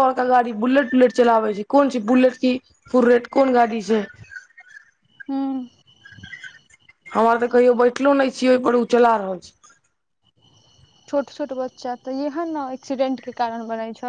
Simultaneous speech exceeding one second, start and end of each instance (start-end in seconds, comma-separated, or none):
none